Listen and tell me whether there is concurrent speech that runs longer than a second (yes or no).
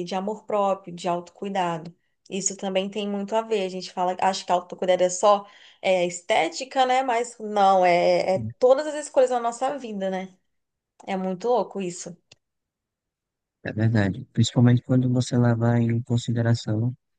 no